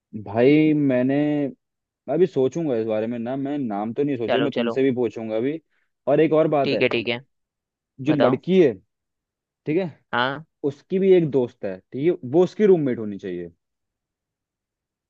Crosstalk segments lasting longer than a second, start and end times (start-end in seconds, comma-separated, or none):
none